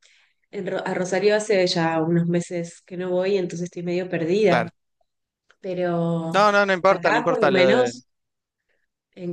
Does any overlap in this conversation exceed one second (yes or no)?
yes